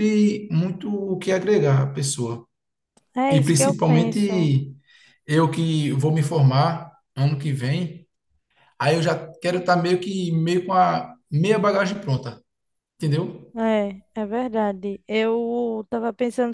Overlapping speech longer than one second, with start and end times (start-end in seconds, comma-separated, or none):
3.3-4.5